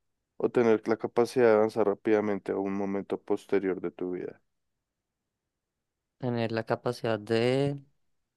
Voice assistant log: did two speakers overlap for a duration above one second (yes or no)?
no